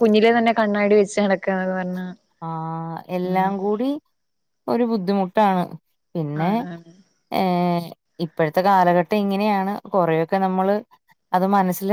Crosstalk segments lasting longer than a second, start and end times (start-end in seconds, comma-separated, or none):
none